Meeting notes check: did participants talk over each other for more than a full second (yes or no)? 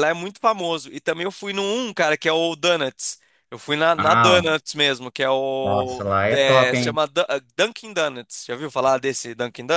yes